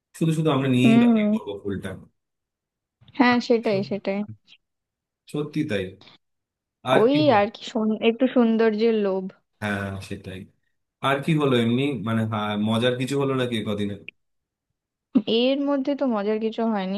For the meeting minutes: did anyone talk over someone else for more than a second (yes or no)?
no